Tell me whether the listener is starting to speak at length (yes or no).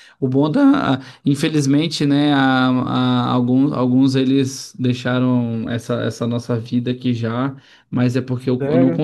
no